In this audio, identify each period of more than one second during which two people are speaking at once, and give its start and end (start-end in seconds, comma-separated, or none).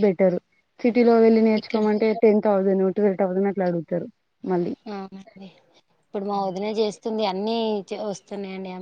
none